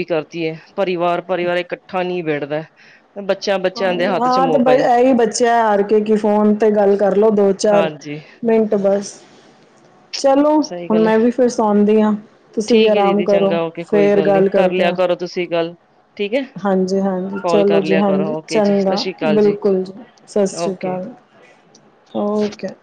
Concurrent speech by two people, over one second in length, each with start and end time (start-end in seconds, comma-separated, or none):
12.7-14.9, 17.4-19.4